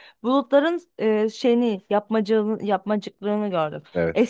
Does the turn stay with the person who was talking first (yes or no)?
yes